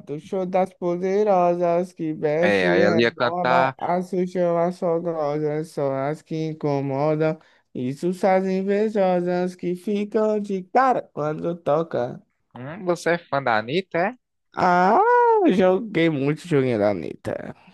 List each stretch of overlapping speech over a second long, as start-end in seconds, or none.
2.4-3.8